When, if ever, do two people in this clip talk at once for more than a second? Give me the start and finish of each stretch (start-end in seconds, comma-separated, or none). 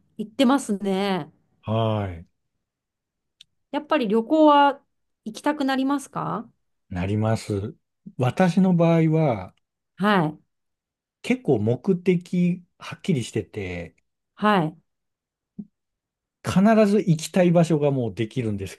none